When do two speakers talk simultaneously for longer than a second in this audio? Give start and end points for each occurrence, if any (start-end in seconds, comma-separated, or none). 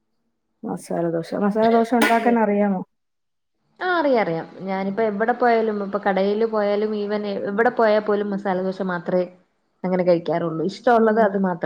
none